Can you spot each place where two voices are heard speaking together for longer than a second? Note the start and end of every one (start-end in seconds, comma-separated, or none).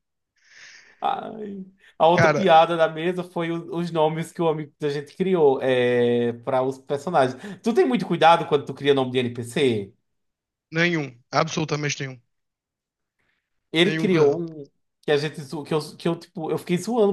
none